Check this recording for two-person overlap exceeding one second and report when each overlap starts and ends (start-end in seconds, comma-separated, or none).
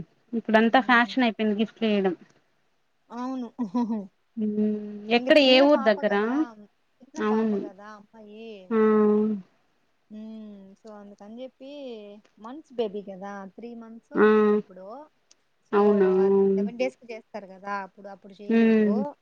none